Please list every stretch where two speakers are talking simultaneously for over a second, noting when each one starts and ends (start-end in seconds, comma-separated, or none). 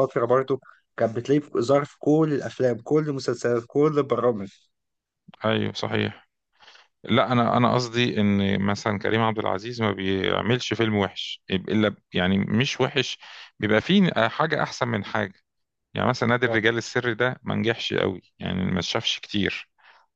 none